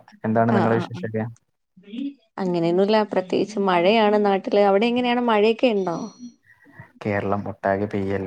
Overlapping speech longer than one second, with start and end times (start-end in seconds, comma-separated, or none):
none